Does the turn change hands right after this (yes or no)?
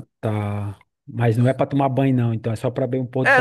yes